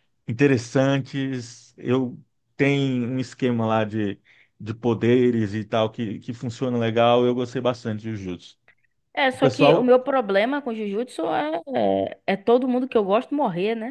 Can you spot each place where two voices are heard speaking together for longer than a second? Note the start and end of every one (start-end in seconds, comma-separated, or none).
none